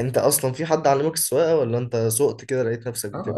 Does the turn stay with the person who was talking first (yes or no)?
no